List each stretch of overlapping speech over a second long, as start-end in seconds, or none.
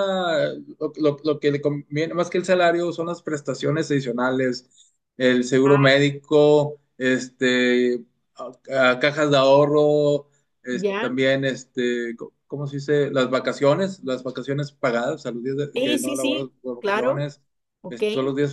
15.8-17.2